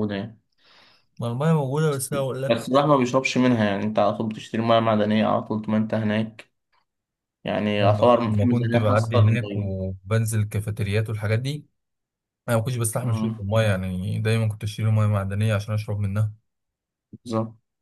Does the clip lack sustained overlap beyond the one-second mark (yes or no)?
no